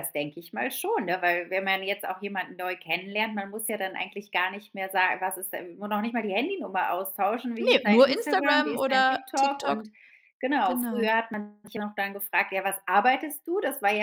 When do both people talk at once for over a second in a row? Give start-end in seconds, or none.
7.6-9.8